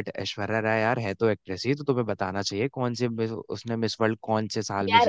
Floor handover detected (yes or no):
yes